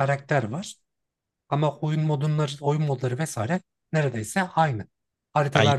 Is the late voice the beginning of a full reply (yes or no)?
no